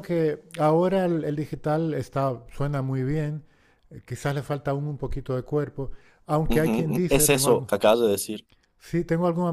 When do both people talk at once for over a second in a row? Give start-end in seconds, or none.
6.5-7.7